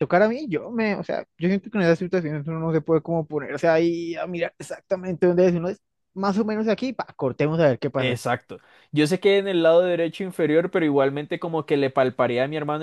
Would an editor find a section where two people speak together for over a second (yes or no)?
no